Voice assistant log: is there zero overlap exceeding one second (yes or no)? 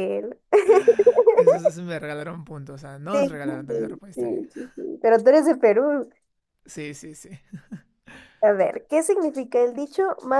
no